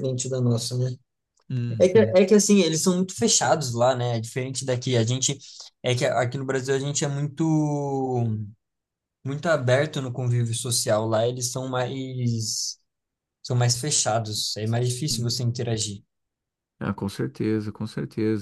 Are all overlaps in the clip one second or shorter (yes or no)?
yes